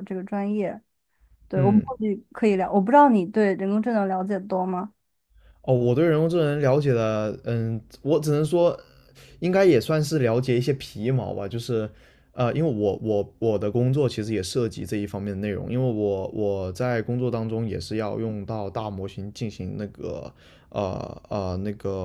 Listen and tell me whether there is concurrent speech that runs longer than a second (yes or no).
no